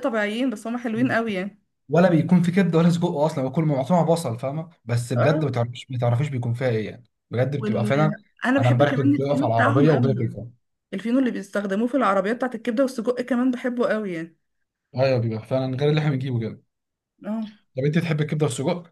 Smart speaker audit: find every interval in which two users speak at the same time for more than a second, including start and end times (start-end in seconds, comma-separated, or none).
8.6-10.4